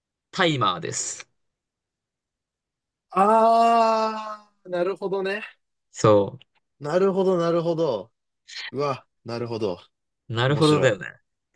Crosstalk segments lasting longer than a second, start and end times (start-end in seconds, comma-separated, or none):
none